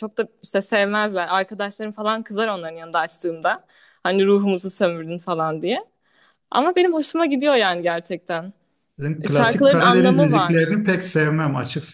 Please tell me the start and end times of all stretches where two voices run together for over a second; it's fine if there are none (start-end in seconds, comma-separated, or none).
9.2-10.7